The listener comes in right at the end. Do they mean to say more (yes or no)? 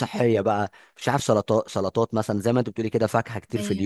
no